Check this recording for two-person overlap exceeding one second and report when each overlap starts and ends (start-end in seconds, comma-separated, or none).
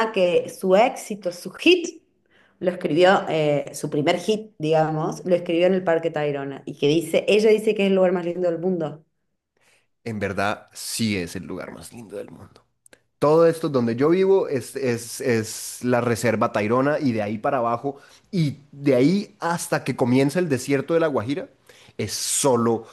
none